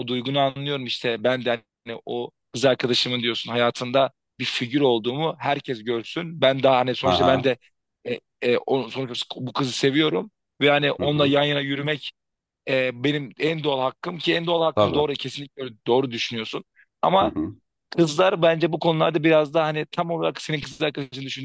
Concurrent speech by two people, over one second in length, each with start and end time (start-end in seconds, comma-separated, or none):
none